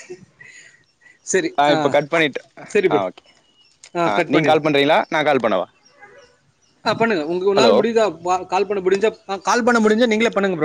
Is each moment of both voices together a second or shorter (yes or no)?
yes